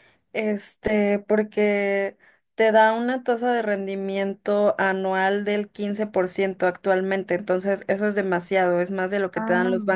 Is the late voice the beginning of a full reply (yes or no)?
no